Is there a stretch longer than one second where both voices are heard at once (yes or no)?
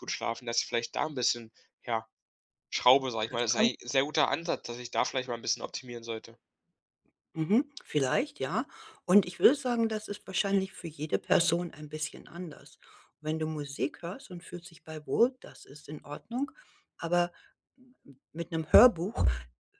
no